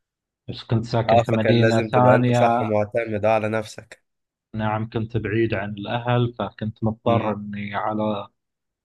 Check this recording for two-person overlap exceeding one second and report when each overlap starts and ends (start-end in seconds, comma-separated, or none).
1.1-2.7